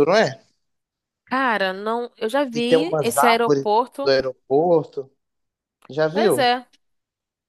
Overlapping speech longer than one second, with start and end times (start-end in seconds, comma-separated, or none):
2.5-4.1